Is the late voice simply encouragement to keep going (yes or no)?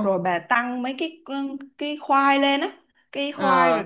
yes